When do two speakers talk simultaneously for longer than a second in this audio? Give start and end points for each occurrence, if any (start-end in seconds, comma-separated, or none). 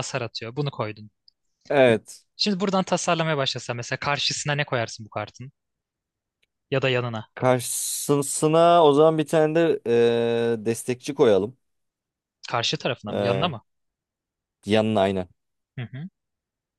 none